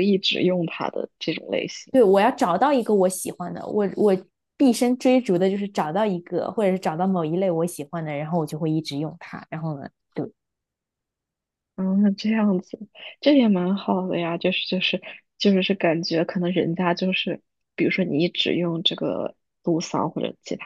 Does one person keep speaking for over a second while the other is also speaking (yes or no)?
no